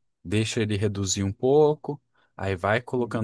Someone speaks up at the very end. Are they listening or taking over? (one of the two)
listening